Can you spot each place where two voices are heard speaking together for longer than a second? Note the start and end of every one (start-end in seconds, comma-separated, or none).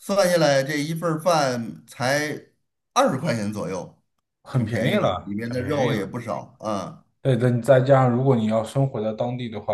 4.5-6.1